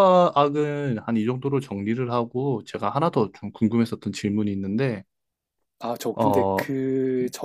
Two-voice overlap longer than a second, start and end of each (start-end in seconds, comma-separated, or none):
none